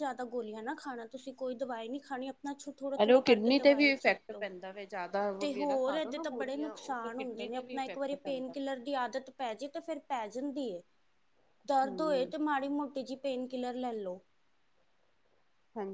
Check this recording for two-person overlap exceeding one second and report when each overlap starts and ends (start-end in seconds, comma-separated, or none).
3.0-4.5, 5.4-8.6